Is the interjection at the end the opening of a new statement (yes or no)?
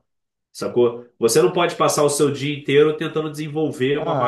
yes